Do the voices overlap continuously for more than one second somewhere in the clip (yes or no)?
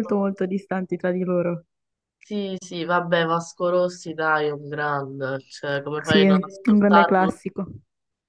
yes